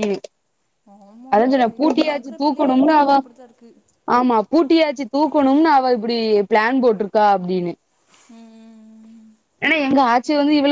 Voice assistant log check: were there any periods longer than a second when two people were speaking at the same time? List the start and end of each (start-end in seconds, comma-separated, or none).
1.3-3.1